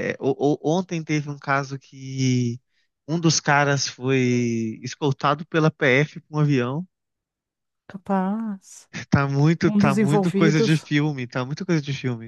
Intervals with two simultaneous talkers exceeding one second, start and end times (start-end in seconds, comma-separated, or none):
9.7-10.9